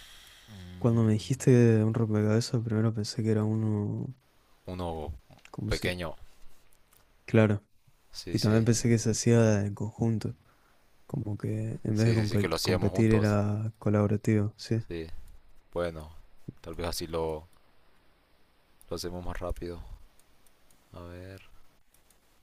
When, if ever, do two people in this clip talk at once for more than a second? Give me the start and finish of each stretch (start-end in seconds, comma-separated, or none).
11.9-13.4